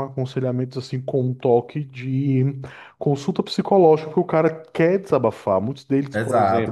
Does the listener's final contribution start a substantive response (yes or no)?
yes